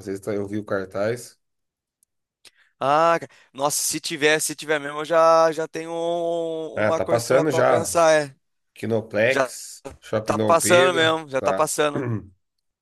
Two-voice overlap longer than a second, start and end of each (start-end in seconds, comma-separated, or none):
6.7-8.0, 10.2-11.7